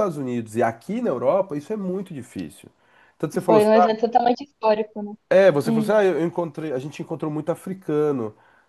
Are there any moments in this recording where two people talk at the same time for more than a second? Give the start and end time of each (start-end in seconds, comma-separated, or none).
none